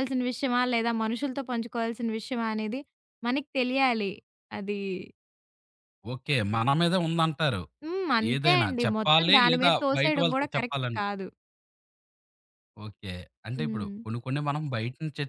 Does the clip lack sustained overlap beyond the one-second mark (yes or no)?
no